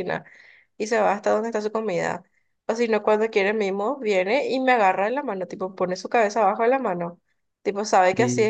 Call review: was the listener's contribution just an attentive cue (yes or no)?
yes